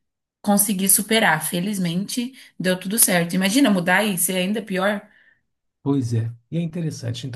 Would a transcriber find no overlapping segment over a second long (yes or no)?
yes